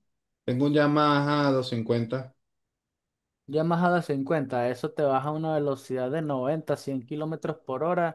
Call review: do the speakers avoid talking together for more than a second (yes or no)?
yes